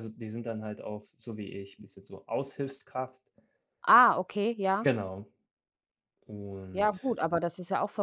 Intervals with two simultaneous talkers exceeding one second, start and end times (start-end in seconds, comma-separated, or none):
none